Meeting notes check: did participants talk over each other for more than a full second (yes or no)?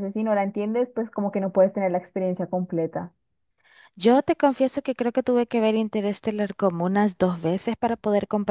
no